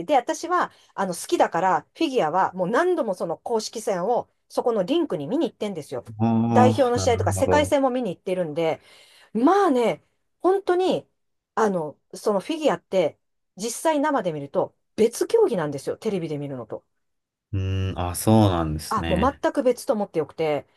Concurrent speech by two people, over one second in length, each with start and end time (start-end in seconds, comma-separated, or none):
6.5-7.8